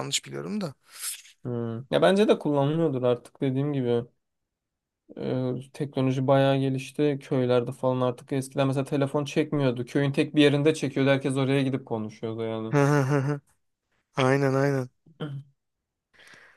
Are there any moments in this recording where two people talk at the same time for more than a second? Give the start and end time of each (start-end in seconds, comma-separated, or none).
none